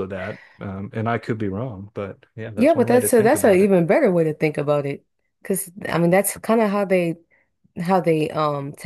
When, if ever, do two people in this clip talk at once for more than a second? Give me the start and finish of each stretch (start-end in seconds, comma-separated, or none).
2.5-3.8